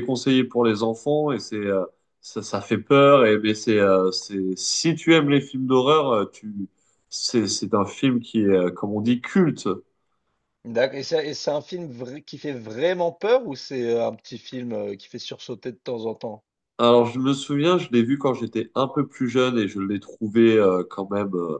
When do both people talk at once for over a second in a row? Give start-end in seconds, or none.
none